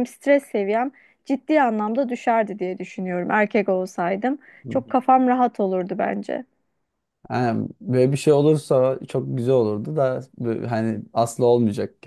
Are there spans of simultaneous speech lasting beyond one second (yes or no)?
no